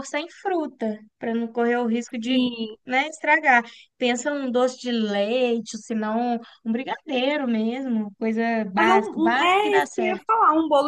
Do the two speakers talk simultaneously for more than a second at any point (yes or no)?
yes